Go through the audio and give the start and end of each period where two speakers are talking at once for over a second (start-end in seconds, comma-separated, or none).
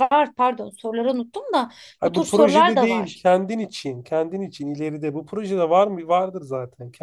2.0-3.2